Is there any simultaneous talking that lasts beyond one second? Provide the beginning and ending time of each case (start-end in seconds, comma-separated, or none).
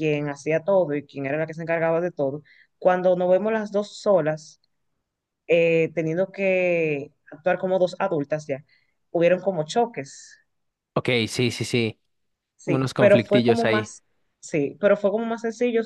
12.7-13.9